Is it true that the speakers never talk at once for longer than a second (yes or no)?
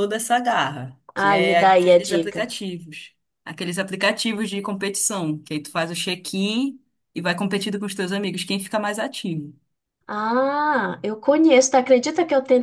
no